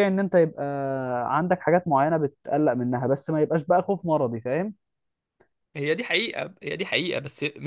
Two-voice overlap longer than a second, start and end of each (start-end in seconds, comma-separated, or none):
none